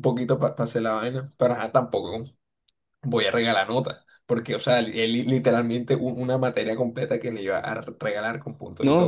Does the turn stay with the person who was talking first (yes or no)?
no